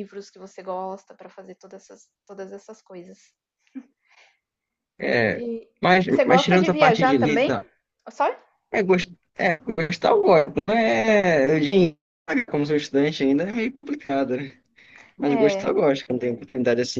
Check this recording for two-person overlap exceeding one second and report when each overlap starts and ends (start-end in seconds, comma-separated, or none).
6.1-7.6